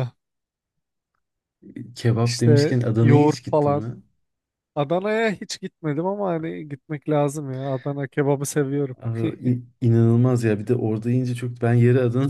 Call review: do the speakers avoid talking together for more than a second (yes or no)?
no